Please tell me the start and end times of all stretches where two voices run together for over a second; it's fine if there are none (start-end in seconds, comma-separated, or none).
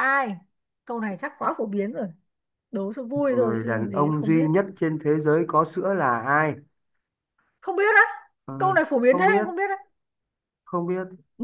3.3-4.5